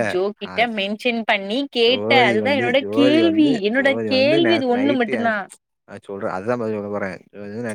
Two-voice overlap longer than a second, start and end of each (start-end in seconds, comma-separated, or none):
1.9-5.2